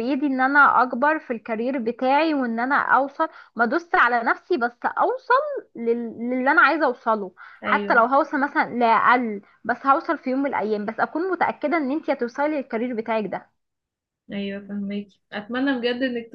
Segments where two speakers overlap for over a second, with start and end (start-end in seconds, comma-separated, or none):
none